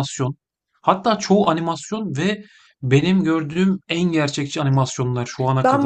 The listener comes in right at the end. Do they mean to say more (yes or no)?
yes